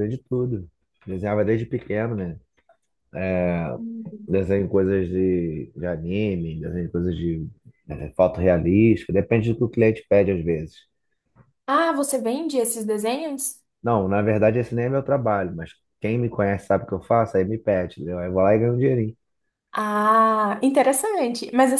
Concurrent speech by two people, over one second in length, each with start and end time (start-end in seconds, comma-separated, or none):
none